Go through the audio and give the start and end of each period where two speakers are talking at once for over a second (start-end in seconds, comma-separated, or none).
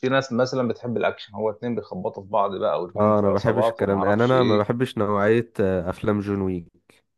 3.0-4.7